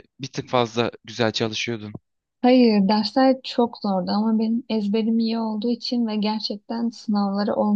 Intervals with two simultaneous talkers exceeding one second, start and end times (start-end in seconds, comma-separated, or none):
none